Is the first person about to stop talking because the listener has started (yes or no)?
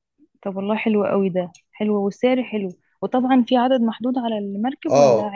yes